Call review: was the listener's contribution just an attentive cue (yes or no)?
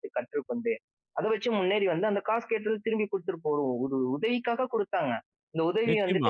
no